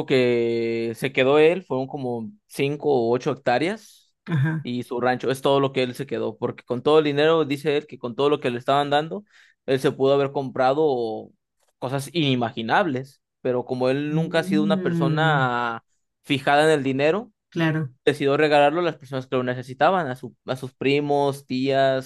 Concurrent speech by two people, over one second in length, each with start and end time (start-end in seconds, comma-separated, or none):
14.1-15.5